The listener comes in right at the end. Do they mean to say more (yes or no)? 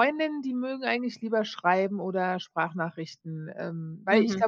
yes